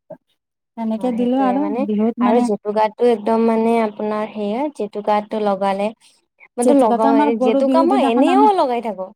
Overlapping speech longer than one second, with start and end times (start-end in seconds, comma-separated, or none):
6.7-8.5